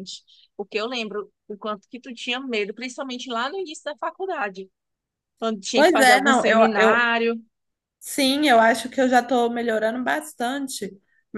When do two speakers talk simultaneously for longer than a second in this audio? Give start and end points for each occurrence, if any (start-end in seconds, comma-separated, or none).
5.7-7.1